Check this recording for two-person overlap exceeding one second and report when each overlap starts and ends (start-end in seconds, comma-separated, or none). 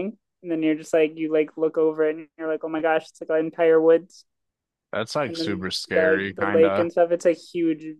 5.2-6.9